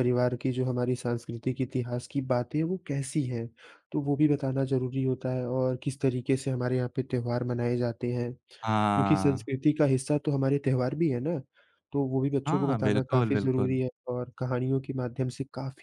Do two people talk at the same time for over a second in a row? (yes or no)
yes